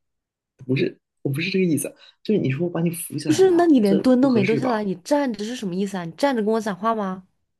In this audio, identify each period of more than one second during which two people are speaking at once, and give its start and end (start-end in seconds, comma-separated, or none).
3.2-4.8